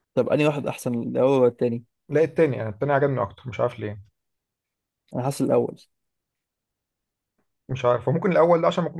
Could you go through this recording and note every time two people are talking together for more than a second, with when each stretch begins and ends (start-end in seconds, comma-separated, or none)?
none